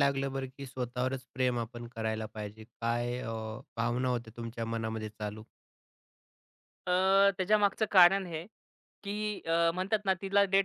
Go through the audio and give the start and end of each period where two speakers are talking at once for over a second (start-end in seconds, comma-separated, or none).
none